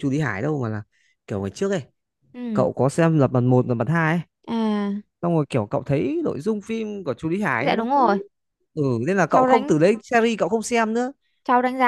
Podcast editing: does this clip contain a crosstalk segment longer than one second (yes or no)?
no